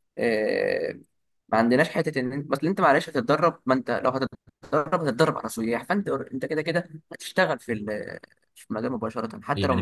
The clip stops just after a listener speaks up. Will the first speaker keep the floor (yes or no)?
no